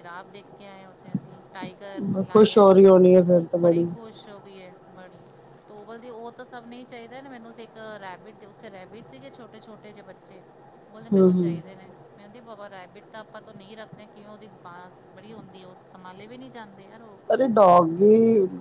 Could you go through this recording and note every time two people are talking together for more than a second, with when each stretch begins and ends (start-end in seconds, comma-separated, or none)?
none